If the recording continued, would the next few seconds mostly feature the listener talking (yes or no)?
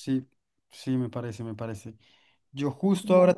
no